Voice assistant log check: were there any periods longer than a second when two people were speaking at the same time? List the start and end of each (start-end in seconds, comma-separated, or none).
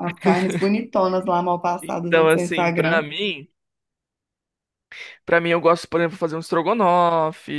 1.8-3.0